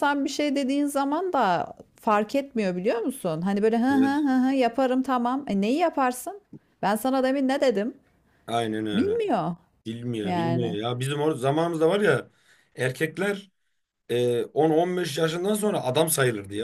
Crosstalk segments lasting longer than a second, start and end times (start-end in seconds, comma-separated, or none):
none